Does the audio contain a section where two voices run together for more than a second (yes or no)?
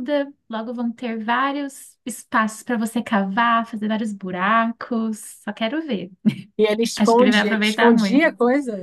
yes